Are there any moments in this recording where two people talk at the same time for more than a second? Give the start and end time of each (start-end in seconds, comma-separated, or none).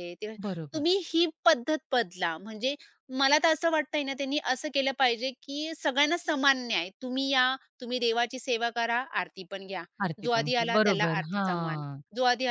10.2-12.0